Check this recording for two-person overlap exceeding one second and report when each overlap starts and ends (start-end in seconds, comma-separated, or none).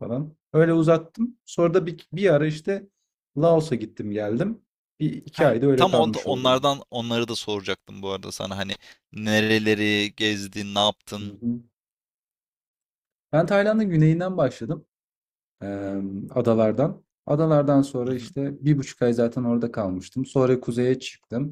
5.3-6.7